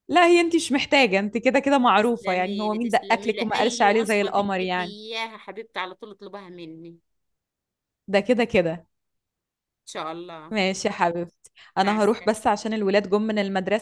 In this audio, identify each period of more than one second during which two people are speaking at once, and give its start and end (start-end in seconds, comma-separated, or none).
2.0-5.0